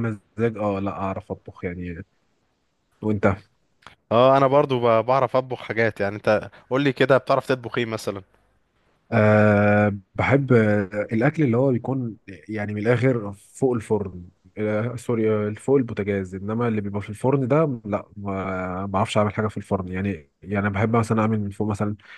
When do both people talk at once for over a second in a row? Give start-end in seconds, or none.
none